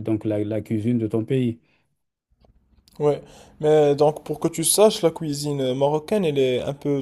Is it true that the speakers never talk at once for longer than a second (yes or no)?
yes